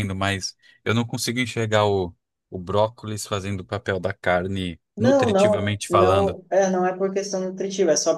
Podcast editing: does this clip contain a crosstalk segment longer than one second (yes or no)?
yes